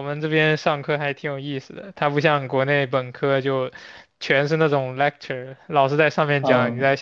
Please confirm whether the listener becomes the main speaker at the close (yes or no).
no